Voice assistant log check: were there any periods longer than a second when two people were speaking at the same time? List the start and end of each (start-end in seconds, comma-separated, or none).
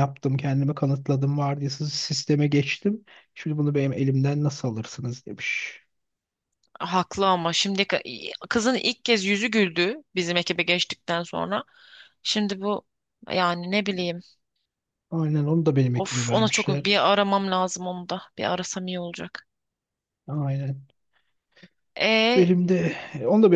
15.9-17.2